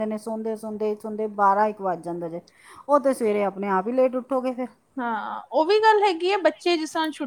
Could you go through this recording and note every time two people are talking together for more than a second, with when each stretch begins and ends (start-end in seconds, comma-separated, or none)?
none